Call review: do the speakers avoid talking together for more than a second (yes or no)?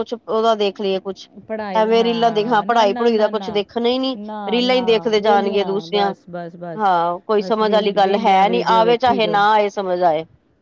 no